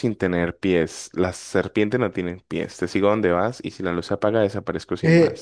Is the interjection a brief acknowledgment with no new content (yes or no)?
no